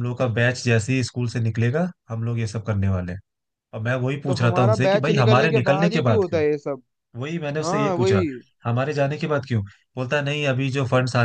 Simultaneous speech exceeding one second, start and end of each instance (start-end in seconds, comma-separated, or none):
4.3-6.4